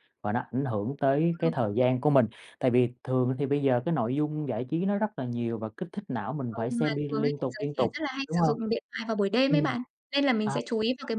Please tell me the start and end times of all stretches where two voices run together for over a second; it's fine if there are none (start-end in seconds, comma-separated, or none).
6.5-8.6